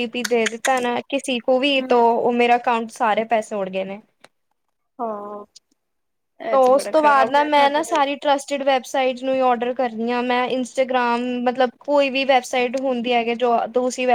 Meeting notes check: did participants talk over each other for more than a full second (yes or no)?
yes